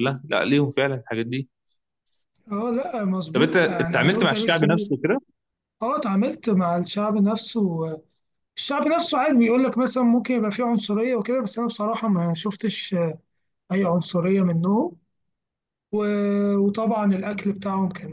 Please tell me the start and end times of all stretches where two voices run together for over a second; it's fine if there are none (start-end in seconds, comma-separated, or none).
3.3-4.9